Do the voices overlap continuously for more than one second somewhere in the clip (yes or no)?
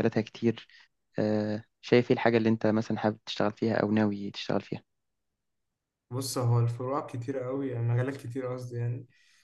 no